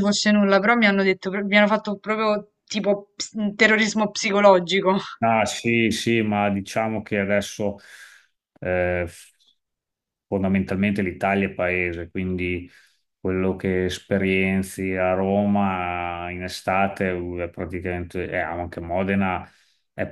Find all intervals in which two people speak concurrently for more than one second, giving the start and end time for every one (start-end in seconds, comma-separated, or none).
none